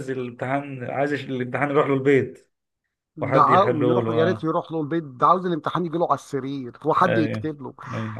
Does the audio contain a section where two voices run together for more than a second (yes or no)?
yes